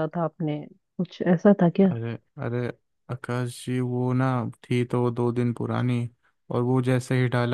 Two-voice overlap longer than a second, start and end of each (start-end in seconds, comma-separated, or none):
none